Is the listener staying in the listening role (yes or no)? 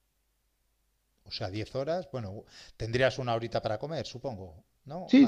no